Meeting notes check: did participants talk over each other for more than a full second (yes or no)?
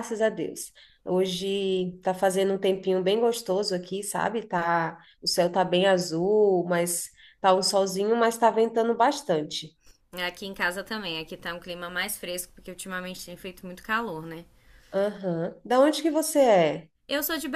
no